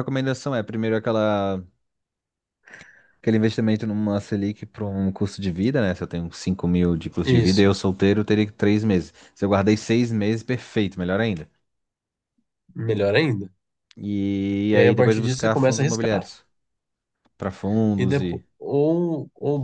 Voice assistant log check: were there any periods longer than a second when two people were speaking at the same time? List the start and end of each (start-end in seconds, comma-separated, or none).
14.7-16.3